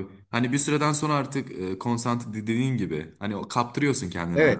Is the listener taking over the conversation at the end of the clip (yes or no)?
yes